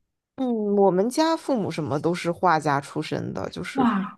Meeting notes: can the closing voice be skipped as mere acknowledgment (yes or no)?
yes